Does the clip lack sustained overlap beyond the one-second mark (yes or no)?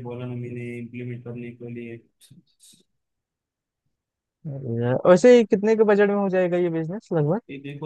yes